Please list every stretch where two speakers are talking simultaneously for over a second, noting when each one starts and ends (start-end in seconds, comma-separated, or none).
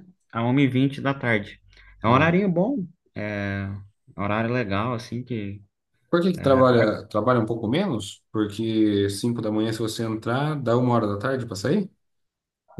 none